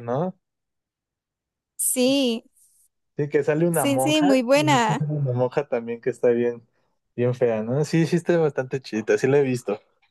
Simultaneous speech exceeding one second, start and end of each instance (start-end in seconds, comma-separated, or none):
3.7-5.0